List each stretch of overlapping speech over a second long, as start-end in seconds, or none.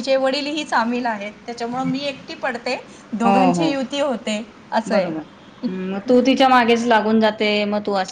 none